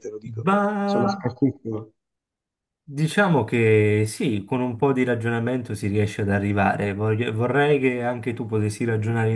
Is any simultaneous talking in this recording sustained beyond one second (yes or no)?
no